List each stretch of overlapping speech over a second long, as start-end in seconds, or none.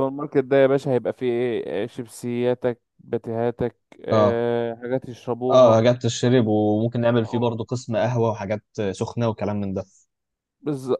none